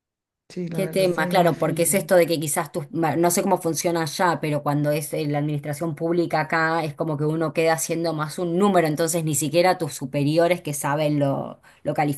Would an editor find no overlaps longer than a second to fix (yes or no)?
no